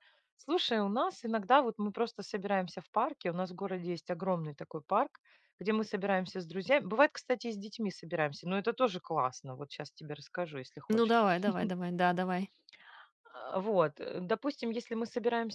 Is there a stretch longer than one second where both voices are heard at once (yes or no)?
no